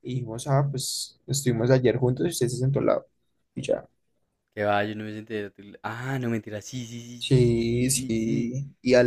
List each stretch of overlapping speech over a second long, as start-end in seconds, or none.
7.2-8.5